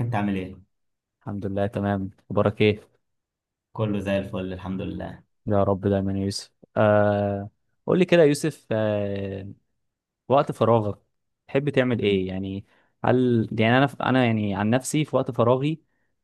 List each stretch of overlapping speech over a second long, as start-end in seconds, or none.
none